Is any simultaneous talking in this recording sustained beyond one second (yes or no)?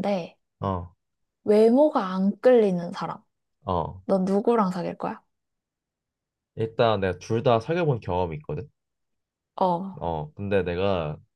no